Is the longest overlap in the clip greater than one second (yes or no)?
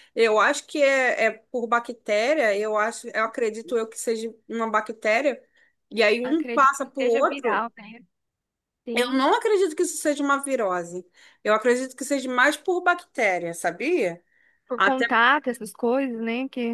yes